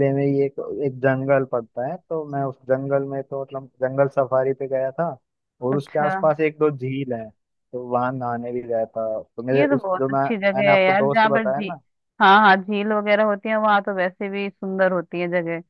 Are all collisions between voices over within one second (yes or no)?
no